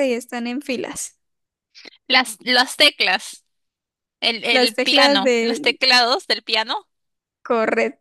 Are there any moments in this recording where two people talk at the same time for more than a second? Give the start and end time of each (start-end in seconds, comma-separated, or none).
4.5-5.8